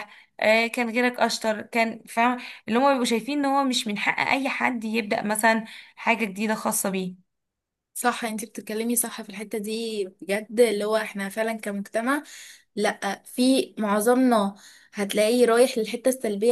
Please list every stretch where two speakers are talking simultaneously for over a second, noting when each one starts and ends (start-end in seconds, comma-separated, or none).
none